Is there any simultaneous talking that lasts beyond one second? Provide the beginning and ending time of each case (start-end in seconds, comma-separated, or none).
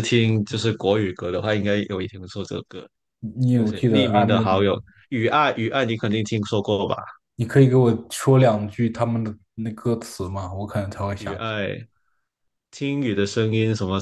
3.5-4.8